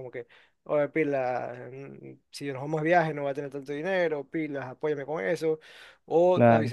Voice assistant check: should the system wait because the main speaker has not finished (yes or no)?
yes